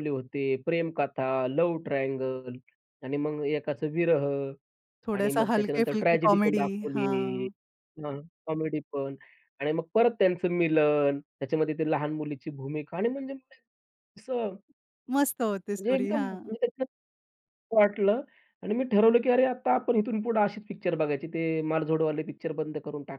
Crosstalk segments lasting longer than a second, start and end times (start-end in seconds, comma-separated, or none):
5.2-7.5